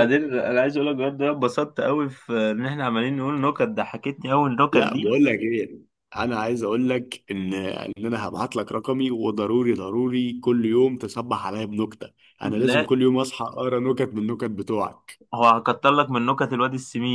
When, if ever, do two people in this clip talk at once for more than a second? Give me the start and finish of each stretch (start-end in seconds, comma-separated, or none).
none